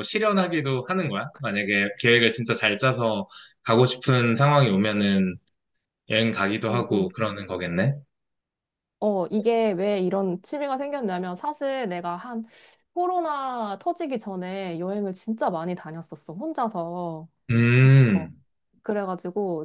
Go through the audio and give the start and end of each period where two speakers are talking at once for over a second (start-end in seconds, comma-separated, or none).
none